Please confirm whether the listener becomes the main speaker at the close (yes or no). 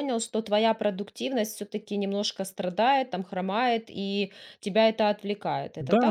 yes